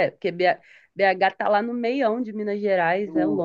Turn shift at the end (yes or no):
yes